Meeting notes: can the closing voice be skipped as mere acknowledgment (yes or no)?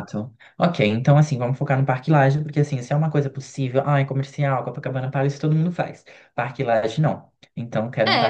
no